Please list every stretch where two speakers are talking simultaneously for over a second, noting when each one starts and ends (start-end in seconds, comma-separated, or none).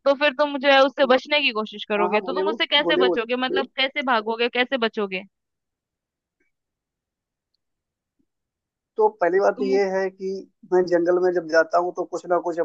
2.0-3.6